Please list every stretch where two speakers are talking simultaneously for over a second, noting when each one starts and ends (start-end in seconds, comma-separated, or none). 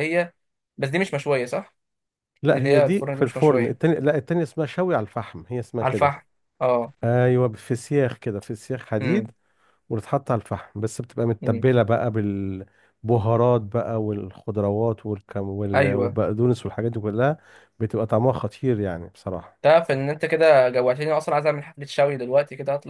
2.5-3.9